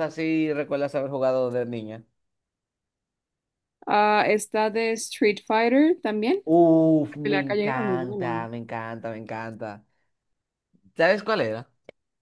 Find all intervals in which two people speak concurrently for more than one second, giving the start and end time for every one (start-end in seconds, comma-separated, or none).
7.1-8.5